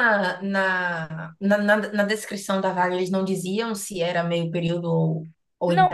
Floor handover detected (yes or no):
yes